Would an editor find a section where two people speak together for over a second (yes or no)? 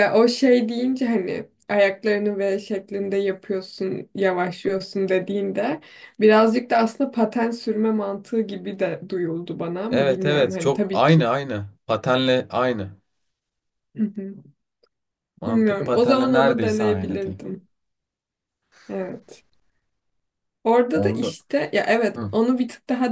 yes